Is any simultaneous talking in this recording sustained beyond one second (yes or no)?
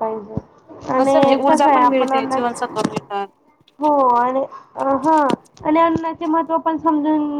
yes